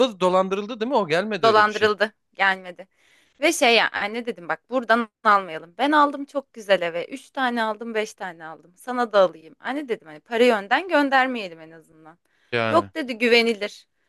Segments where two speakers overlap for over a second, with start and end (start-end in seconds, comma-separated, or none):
none